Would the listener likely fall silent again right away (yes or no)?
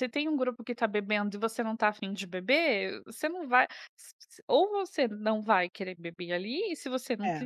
yes